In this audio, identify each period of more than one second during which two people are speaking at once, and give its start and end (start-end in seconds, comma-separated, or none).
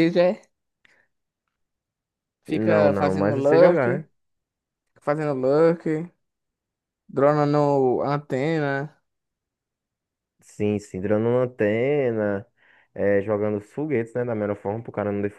2.5-4.1